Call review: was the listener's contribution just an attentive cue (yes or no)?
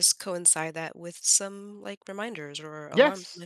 no